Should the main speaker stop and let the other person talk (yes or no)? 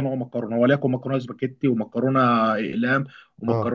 no